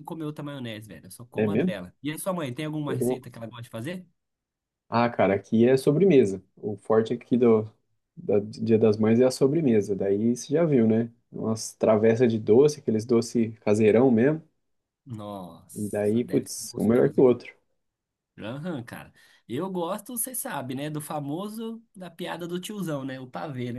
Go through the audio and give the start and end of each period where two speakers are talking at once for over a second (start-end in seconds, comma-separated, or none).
15.7-17.3